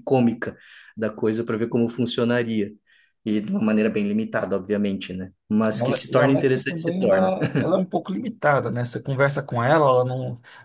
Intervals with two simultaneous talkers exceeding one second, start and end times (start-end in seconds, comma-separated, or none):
5.7-7.3